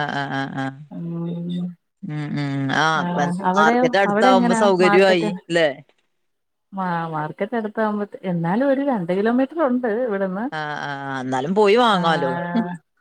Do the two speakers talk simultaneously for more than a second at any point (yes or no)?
yes